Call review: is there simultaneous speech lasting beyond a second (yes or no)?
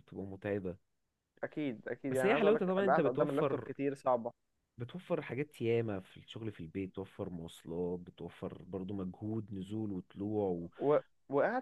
yes